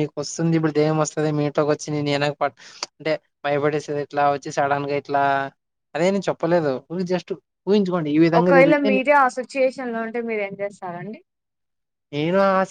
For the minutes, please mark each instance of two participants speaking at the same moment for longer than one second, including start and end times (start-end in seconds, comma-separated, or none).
none